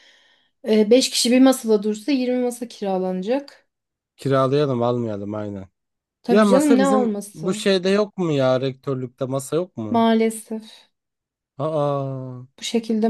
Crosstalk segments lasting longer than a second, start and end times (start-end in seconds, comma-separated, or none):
6.3-7.6